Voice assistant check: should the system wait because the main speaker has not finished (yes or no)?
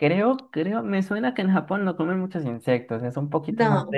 yes